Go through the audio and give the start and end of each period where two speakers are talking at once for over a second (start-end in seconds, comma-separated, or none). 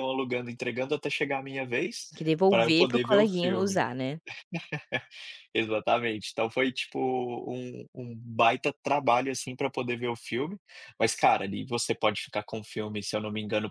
2.5-3.8